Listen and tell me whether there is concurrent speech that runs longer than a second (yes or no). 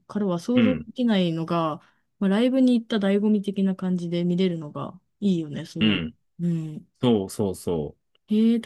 no